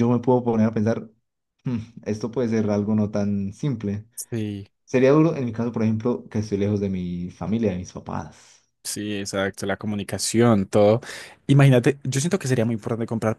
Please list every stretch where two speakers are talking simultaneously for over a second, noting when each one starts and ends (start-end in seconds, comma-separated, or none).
none